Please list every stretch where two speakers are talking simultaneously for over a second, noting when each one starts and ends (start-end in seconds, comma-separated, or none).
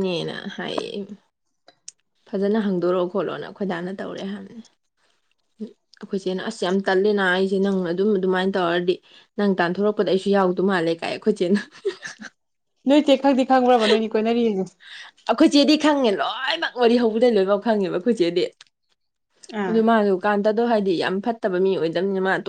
none